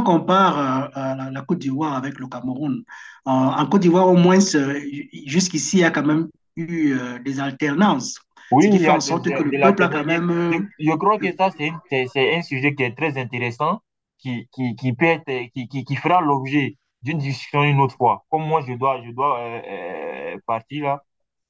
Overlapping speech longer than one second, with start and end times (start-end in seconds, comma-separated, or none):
8.6-10.6